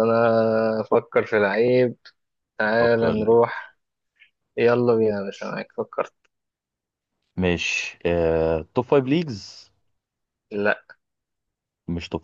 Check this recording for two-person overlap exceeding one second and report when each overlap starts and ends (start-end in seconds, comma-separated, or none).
none